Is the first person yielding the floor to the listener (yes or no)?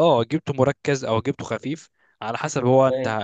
no